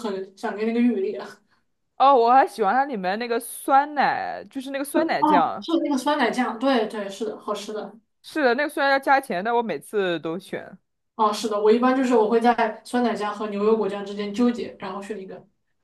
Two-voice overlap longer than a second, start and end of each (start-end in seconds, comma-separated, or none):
none